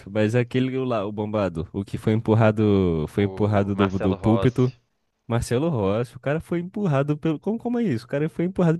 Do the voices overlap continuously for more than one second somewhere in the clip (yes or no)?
yes